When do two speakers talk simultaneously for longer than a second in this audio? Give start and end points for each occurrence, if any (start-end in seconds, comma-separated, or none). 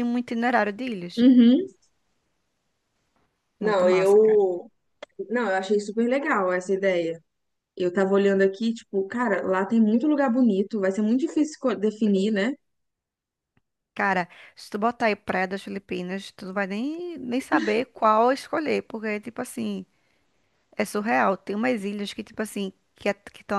none